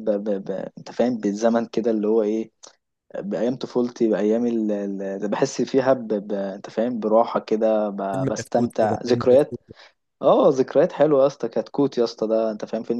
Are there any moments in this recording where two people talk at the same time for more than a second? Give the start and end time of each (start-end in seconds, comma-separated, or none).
8.1-9.6